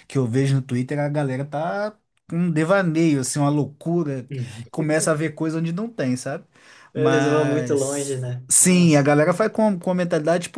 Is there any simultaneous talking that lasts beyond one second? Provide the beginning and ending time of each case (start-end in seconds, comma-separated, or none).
6.9-9.1